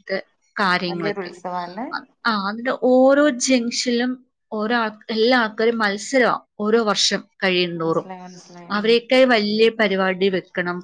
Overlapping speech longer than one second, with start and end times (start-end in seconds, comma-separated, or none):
none